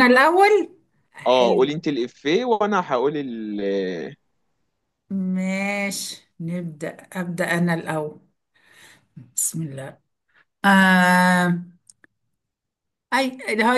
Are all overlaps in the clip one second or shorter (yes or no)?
yes